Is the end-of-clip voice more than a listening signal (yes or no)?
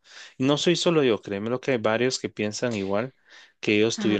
yes